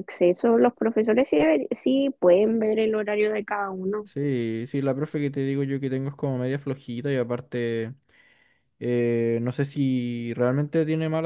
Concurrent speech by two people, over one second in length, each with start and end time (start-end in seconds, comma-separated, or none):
none